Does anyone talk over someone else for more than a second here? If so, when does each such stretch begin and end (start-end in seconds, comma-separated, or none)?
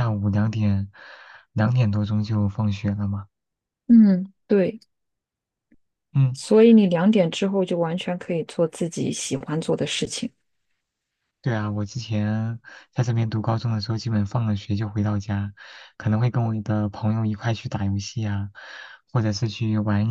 none